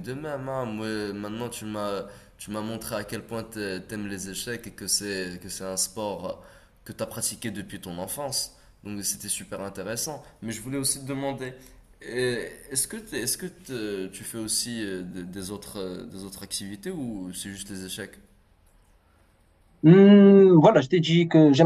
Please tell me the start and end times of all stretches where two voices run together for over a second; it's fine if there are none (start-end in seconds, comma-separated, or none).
none